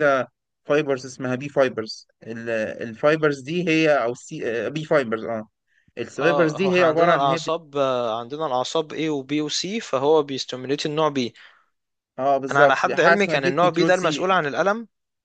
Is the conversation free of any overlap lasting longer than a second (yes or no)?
no